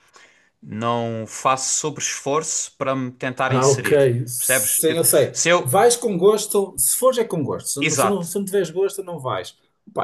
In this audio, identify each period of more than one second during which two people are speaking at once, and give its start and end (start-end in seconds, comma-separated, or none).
3.5-5.8